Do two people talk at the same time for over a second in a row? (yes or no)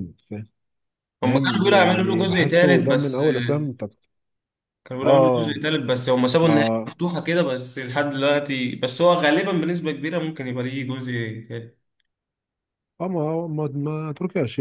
yes